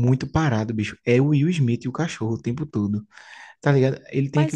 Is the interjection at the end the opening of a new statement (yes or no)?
yes